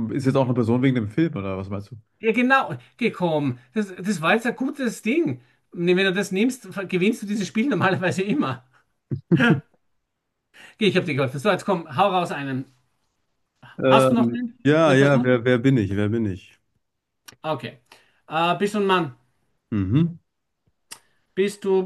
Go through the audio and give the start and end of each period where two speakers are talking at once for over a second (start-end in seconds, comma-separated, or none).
13.8-15.4